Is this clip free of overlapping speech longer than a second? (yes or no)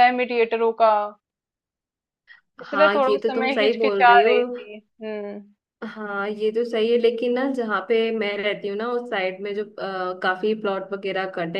no